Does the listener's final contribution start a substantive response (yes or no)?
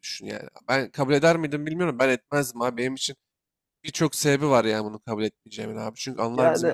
no